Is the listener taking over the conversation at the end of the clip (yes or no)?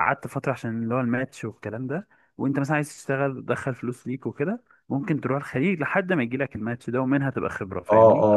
yes